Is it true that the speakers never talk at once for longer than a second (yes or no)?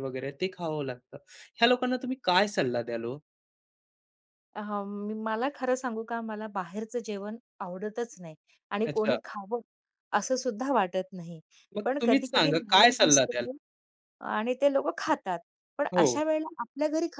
no